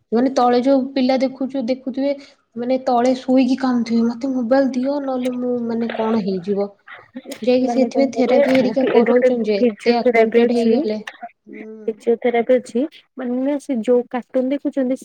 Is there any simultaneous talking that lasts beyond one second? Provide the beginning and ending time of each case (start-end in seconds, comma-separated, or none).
7.7-10.8